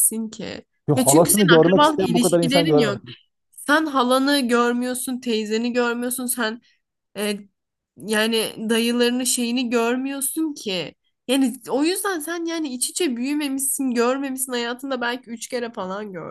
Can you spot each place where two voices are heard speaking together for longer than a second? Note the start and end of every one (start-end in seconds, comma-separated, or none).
0.9-3.0